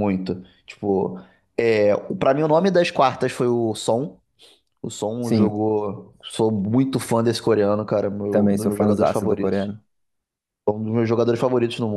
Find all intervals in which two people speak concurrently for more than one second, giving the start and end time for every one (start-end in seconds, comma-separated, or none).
8.3-9.7